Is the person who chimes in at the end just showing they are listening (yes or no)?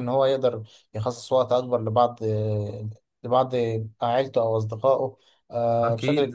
no